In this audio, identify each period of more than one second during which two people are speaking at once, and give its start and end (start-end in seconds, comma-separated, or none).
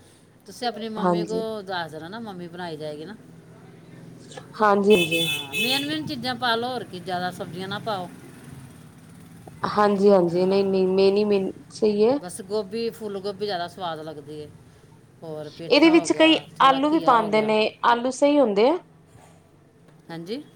15.7-17.5